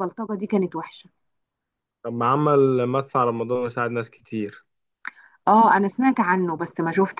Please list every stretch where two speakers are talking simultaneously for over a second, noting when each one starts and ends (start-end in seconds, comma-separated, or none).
none